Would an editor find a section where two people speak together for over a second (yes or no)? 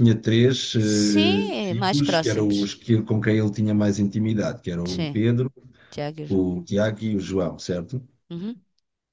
yes